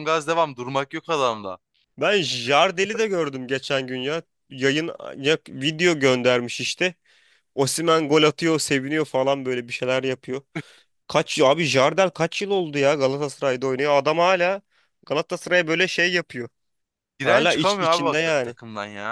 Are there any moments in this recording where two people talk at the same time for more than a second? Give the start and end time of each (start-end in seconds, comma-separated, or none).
17.2-18.6